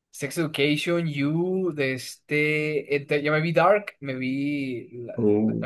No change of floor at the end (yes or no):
yes